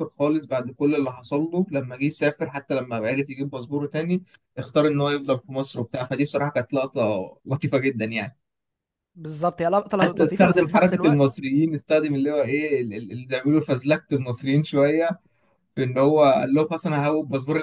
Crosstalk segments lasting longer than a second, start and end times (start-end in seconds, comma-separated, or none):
10.0-11.2